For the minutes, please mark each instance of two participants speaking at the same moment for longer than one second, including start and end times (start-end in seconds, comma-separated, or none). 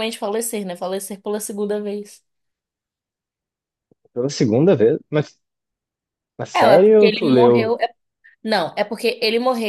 6.5-7.8